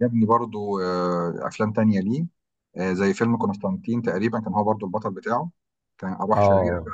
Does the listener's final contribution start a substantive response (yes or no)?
yes